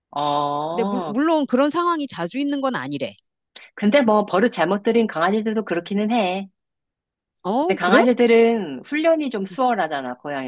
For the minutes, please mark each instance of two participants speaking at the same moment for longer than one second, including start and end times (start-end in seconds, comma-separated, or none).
none